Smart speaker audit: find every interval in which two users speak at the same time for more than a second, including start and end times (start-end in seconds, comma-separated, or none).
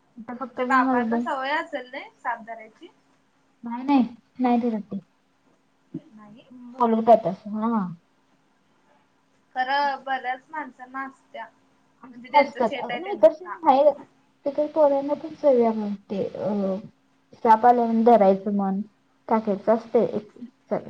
none